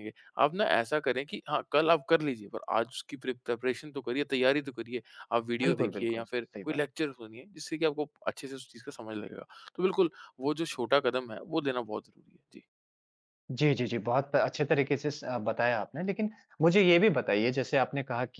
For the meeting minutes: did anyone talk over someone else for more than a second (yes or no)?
yes